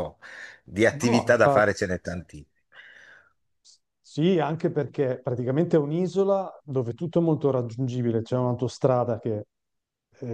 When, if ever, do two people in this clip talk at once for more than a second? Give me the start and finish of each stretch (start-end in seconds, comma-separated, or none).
none